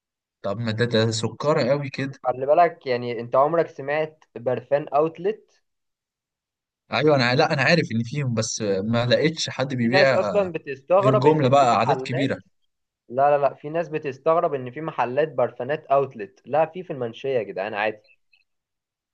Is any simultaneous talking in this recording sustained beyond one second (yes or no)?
yes